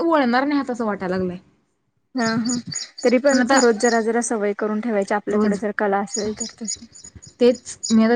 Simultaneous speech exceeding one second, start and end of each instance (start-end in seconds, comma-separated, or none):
none